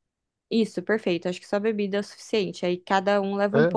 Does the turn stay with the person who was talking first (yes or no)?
yes